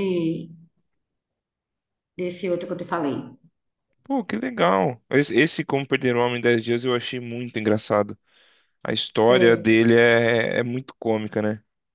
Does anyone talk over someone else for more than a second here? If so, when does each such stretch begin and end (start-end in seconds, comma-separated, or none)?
none